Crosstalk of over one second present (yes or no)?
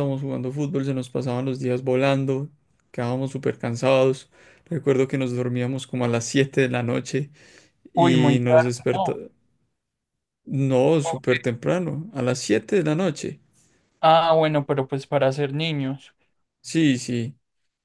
yes